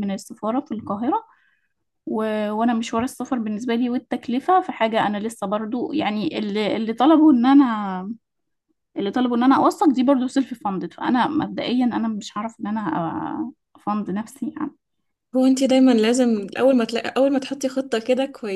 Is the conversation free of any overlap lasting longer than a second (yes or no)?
yes